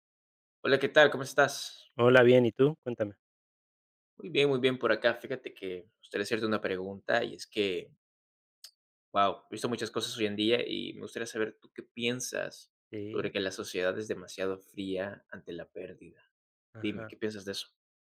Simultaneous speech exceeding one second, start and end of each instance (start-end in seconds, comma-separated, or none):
none